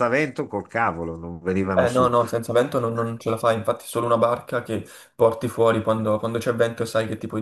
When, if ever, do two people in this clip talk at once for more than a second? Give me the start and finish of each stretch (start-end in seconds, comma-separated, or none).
none